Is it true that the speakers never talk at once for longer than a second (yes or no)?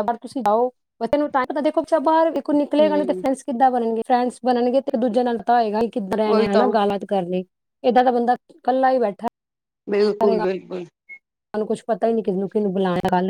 yes